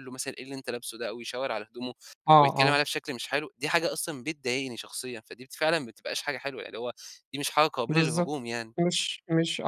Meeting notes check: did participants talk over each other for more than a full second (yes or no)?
no